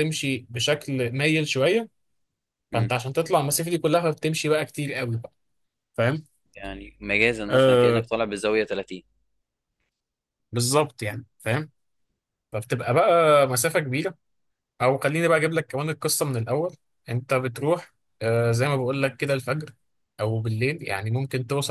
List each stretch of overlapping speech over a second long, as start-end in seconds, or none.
none